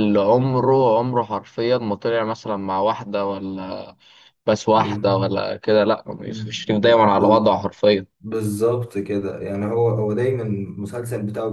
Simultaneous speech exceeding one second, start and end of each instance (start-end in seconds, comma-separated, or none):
6.3-7.5